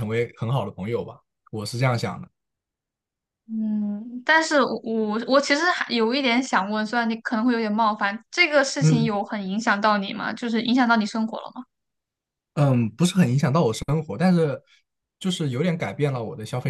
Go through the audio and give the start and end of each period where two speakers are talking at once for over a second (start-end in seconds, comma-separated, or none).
none